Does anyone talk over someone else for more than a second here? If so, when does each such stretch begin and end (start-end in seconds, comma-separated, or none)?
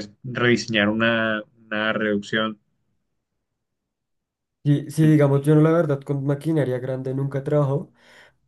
none